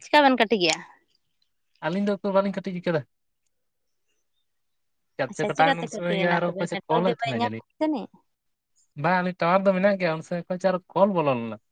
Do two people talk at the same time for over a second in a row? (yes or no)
yes